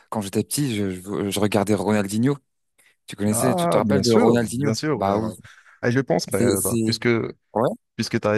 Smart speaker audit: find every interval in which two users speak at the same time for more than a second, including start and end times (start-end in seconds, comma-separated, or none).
3.3-5.3